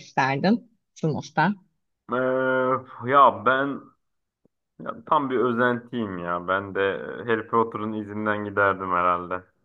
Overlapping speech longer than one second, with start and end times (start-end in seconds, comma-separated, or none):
none